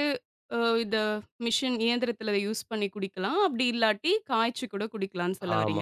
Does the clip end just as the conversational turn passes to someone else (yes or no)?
yes